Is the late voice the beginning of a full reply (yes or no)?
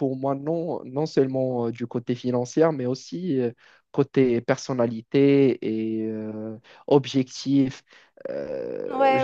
yes